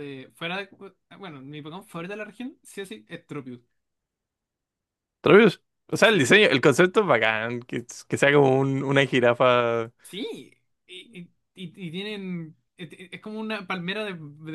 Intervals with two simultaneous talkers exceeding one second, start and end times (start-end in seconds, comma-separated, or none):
none